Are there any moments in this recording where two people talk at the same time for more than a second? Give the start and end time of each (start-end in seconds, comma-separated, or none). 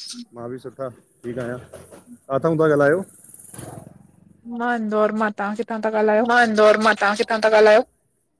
none